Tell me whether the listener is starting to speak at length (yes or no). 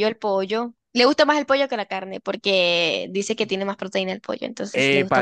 yes